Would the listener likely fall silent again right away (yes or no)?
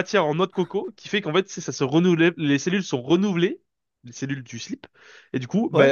yes